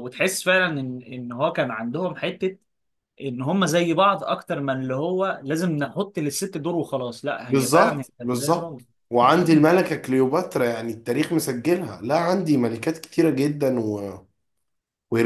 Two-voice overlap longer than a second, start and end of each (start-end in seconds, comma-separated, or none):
7.5-8.8